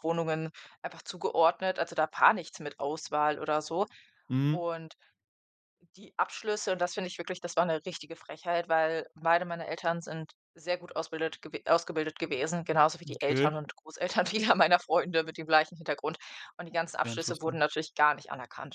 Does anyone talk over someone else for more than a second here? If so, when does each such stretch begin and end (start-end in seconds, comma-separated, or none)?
none